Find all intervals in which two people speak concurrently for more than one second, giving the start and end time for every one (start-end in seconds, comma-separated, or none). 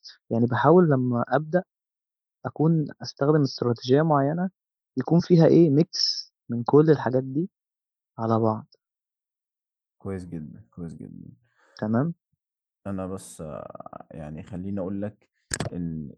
none